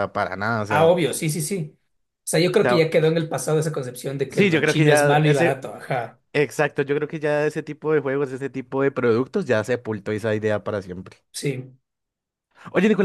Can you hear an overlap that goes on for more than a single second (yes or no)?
yes